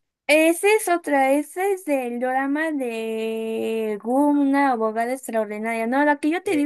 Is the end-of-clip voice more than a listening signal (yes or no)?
no